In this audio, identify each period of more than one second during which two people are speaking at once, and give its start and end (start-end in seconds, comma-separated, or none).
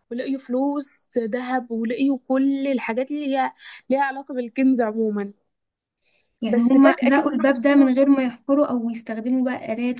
6.5-7.9